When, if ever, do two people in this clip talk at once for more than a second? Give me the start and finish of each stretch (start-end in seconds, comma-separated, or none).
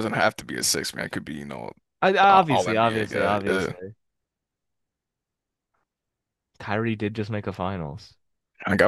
2.3-3.7